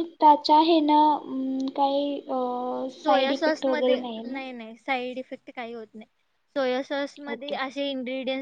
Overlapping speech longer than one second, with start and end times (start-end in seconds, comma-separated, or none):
3.0-4.4